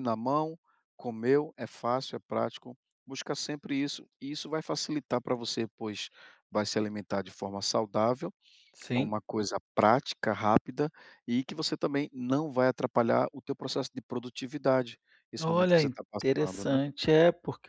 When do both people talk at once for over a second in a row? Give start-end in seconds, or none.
15.4-16.8